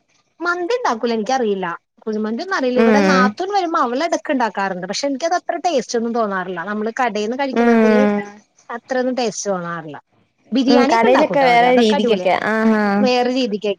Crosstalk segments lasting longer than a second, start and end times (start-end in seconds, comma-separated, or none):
10.7-12.3